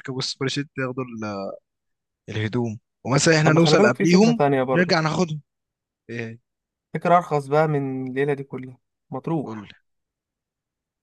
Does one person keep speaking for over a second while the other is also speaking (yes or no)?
yes